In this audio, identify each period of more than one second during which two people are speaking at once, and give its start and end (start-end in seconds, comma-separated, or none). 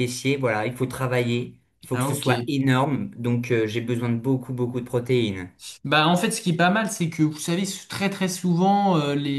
none